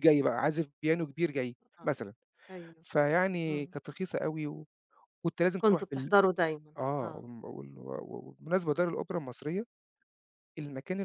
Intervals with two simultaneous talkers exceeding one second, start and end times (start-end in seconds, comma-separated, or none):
none